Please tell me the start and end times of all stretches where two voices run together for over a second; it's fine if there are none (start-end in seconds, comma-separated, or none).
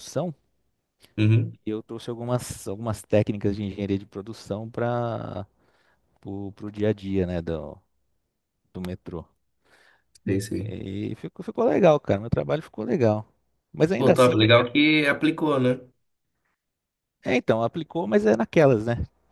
none